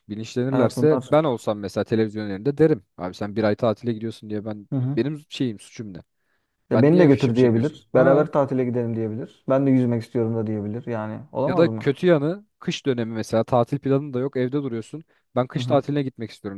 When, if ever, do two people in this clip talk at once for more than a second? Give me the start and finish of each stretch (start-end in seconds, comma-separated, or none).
6.7-8.3